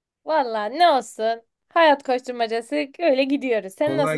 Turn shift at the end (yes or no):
yes